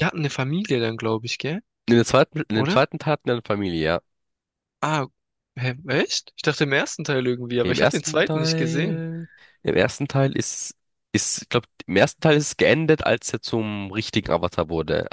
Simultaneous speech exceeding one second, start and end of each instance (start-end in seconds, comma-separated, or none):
7.6-9.0